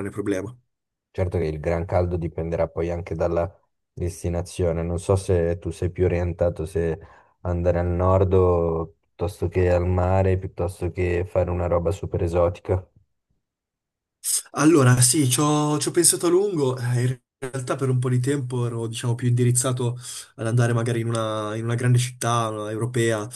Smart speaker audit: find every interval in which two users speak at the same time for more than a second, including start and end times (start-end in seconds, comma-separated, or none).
none